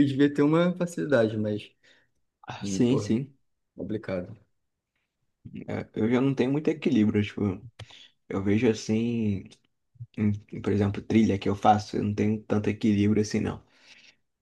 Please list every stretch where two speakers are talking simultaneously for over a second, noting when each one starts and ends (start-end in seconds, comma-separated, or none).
none